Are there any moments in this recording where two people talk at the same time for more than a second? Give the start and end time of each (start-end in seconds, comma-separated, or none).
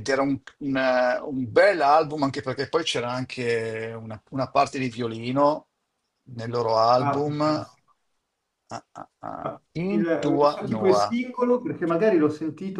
9.4-11.0